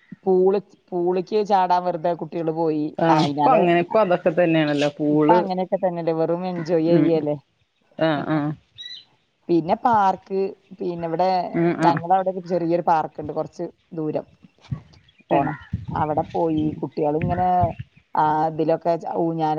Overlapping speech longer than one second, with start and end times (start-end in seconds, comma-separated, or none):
none